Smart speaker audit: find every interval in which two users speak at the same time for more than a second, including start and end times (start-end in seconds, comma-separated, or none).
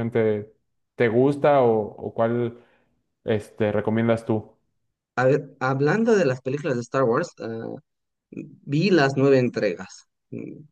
none